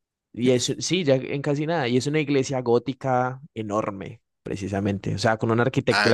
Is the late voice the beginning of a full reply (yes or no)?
no